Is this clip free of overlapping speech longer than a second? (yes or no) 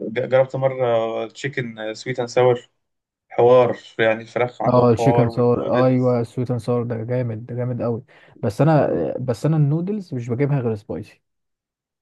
no